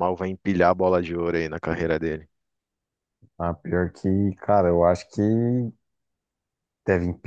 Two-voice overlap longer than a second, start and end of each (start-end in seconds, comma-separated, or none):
none